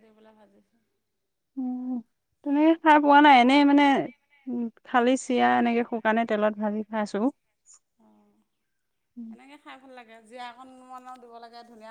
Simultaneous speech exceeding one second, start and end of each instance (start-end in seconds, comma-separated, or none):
none